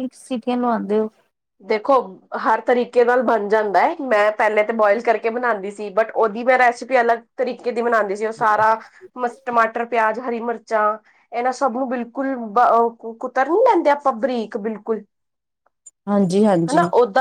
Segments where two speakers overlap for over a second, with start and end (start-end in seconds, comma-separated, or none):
none